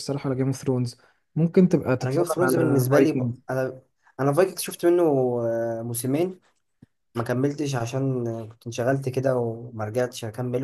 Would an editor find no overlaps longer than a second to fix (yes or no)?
no